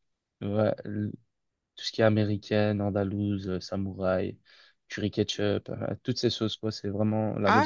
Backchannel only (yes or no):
no